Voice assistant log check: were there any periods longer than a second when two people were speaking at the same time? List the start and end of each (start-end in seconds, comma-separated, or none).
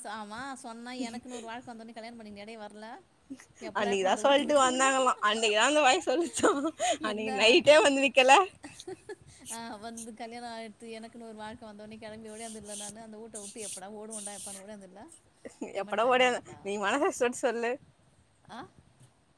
3.8-5.2